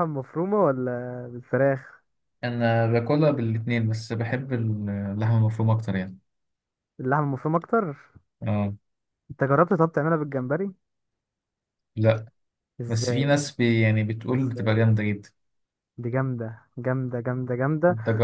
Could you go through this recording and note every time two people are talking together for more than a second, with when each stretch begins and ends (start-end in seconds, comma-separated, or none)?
none